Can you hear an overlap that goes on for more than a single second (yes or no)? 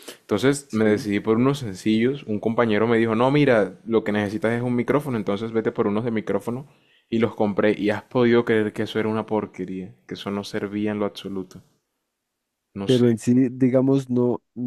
no